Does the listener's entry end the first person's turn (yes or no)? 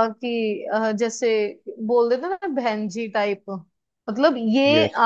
no